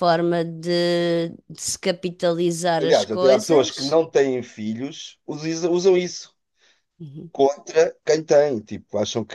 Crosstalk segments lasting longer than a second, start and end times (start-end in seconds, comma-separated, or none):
2.8-4.0